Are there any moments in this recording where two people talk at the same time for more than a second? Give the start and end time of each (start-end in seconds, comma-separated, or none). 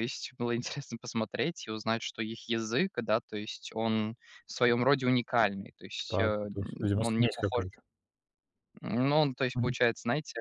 6.1-7.6